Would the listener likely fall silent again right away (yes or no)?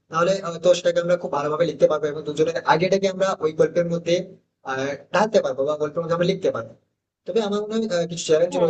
yes